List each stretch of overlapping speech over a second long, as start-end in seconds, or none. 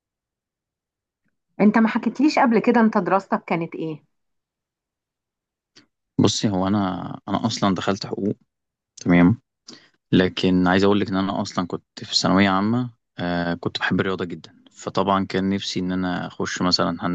none